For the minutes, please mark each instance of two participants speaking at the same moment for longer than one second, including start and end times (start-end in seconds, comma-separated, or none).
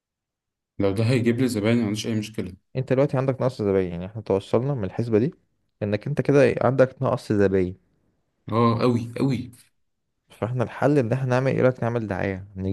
none